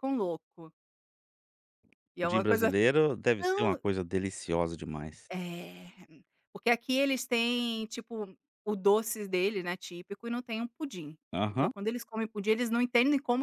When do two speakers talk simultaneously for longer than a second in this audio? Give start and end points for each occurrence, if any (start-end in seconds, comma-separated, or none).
none